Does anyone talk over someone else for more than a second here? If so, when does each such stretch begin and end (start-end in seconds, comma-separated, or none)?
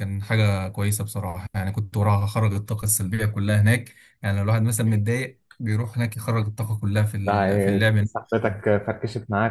7.2-8.5